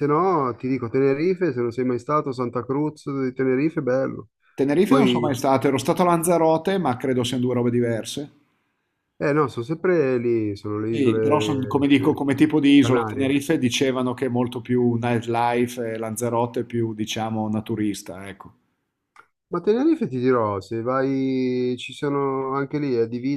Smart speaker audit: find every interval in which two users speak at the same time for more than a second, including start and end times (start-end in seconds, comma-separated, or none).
10.9-12.2